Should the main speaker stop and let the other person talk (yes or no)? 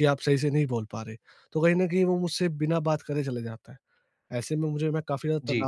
no